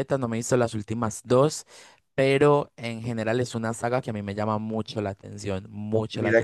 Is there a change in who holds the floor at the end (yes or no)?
yes